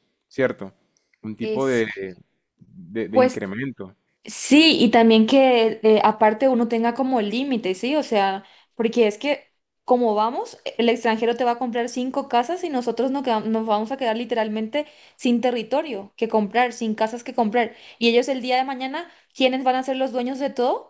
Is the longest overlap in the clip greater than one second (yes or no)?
no